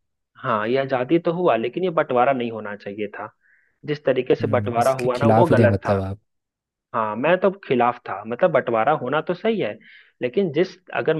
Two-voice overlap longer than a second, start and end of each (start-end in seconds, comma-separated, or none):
4.4-6.0